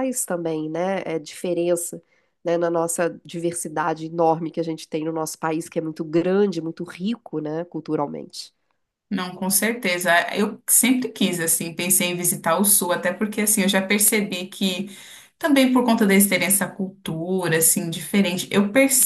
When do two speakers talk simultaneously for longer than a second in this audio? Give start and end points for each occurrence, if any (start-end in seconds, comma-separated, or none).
none